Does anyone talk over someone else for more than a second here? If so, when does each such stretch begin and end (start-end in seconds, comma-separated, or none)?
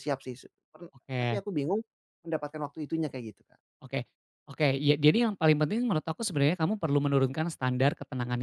none